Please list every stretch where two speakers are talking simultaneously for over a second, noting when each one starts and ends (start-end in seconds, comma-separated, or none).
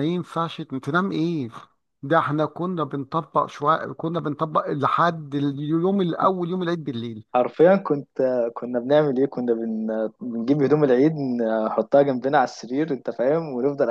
none